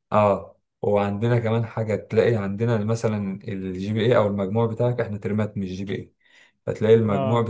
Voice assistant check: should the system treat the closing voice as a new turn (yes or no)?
no